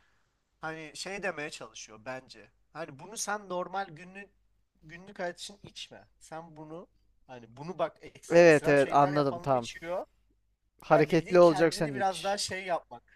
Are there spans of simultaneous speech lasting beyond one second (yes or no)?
yes